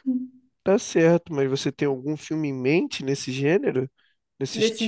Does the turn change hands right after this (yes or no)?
yes